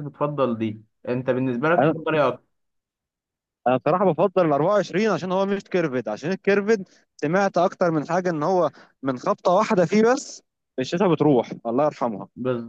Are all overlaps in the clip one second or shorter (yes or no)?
yes